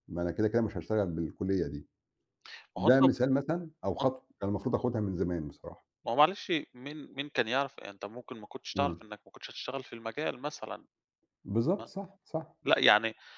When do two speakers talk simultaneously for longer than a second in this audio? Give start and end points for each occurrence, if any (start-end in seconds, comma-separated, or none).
none